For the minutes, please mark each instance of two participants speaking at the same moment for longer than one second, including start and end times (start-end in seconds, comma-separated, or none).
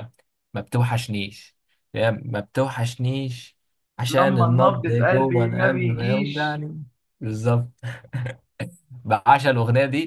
4.2-6.6